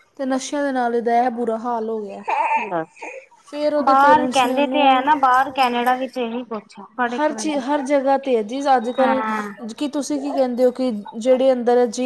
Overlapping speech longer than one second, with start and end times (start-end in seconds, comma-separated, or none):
3.9-5.1